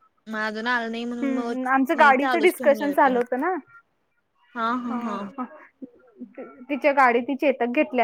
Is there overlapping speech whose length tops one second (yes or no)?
yes